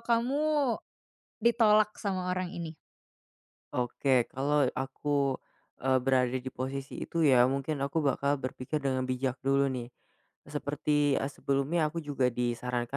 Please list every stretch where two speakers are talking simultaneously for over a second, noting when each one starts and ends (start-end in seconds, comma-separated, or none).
none